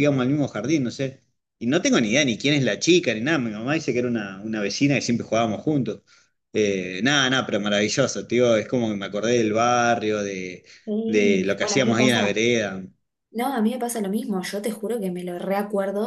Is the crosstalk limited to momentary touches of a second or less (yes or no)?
no